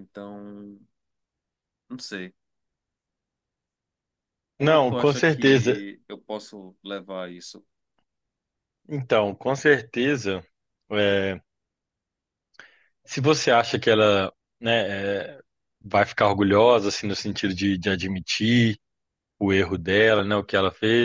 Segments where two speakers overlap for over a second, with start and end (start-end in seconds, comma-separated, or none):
4.6-5.8